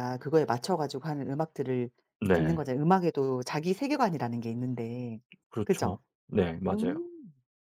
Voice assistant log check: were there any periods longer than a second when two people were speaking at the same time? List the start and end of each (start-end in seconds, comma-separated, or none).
none